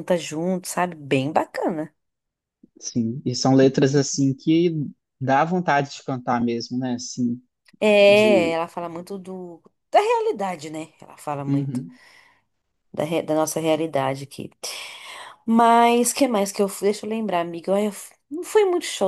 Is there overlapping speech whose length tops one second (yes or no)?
no